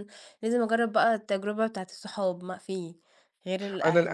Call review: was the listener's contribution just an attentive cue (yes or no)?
no